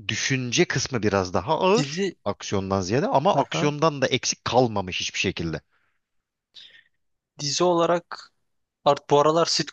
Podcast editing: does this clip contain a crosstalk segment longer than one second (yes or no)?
no